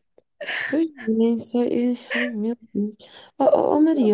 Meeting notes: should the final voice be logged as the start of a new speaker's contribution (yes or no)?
no